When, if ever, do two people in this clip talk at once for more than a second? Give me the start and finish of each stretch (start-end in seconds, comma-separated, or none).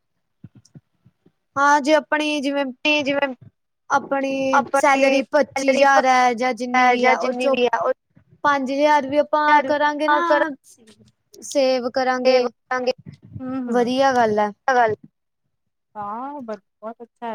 4.5-5.8